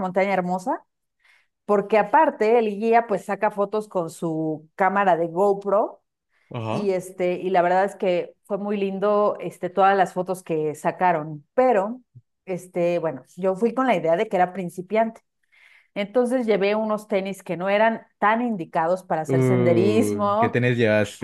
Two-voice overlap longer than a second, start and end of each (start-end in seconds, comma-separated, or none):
19.3-20.6